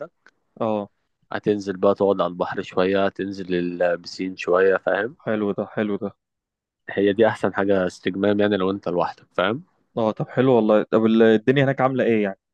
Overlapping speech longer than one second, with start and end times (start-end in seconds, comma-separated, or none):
none